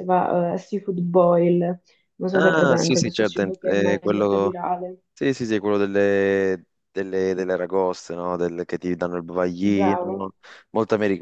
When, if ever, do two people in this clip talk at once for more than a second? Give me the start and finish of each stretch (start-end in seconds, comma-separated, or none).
2.4-4.6